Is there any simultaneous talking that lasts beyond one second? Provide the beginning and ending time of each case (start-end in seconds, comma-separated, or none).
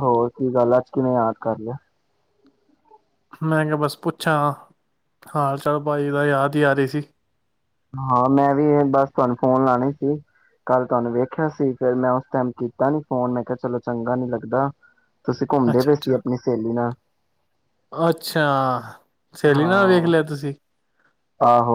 none